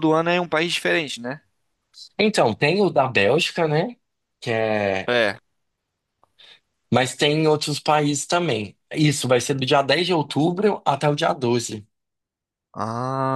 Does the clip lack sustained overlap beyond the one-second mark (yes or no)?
yes